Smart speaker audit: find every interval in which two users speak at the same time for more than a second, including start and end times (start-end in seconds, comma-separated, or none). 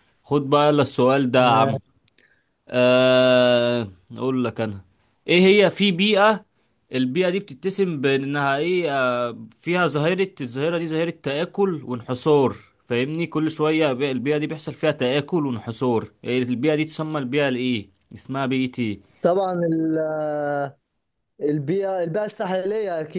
none